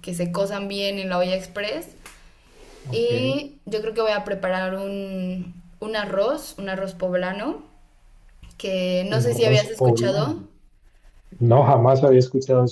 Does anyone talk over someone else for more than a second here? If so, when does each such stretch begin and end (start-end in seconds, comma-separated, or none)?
9.1-10.4